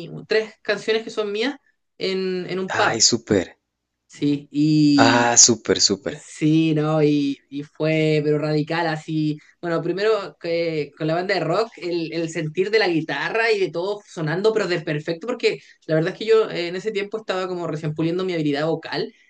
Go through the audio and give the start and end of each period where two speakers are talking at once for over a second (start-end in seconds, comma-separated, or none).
none